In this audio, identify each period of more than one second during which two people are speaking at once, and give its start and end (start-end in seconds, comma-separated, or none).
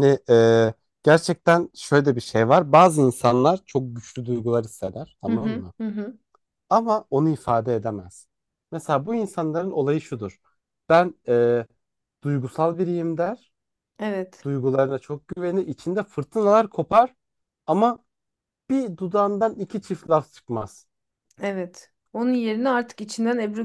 none